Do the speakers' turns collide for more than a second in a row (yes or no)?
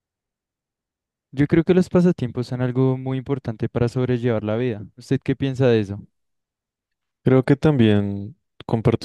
no